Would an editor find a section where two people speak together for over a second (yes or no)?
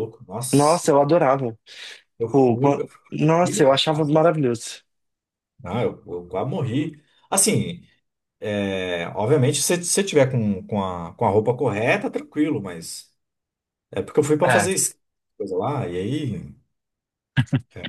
yes